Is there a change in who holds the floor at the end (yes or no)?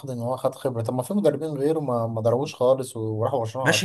yes